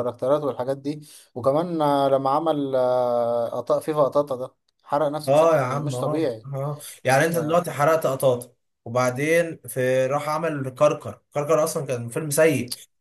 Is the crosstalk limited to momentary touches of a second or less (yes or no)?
no